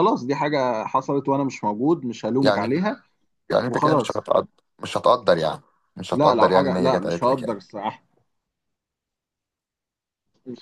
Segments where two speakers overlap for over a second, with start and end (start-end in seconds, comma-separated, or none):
6.1-7.6